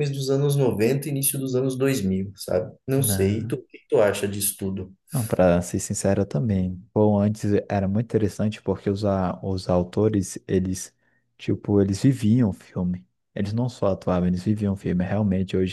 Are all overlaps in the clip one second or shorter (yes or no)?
yes